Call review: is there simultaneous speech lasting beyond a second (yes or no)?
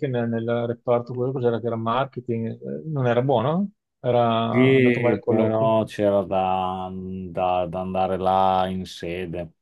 yes